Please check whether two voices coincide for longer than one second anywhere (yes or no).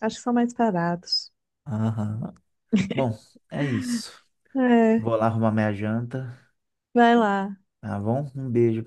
no